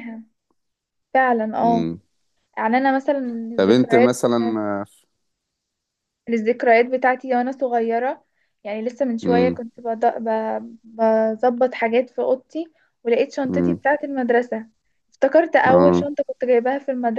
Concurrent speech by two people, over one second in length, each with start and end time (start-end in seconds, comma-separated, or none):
none